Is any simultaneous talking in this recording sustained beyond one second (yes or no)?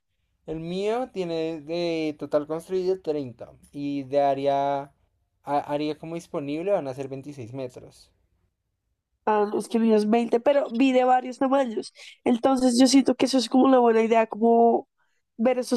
no